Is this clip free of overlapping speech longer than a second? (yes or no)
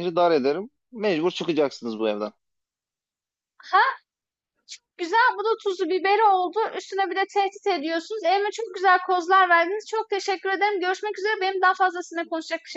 yes